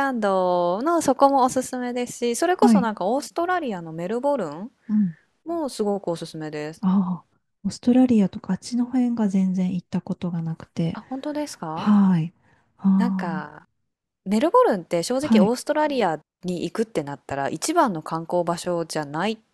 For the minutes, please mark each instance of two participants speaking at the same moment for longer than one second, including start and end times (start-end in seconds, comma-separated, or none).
none